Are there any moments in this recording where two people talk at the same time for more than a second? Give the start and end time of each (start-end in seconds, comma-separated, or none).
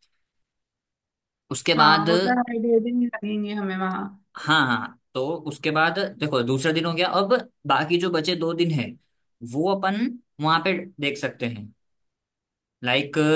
none